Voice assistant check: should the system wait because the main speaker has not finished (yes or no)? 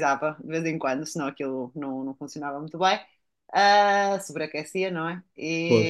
yes